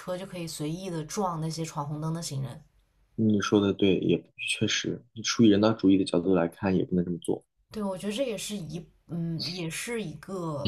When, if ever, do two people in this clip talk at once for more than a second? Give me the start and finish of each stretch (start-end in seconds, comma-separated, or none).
none